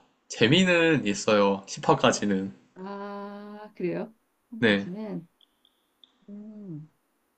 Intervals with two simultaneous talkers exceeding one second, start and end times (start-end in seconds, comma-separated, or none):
none